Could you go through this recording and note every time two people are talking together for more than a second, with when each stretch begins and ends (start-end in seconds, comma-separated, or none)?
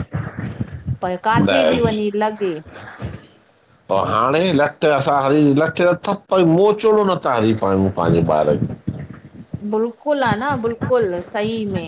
none